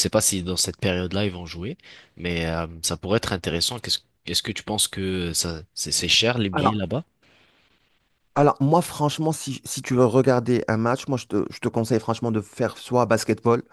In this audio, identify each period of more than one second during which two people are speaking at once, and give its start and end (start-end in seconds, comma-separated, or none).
none